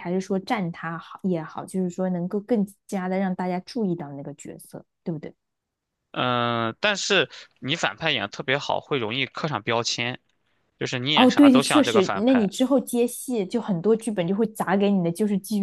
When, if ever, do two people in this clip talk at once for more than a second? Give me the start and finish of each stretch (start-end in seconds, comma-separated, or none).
11.1-12.5